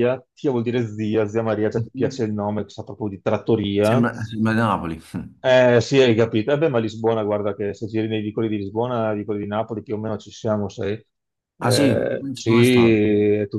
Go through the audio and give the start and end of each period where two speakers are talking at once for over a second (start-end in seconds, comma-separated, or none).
11.6-12.9